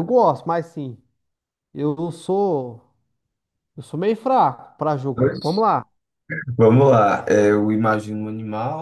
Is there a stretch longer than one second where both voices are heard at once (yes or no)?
no